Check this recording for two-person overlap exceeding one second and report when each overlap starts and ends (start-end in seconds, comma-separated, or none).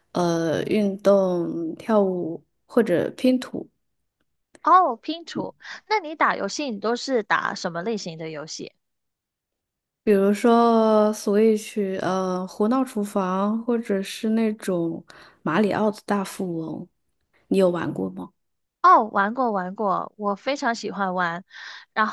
none